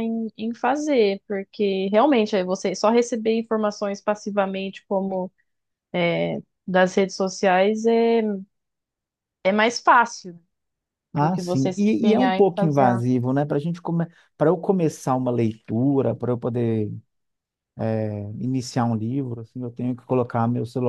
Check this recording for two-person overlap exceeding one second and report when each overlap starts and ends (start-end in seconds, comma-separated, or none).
11.2-13.1